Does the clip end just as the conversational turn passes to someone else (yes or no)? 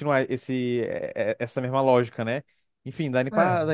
no